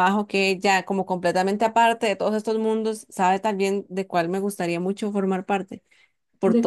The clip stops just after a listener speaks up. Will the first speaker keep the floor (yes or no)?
yes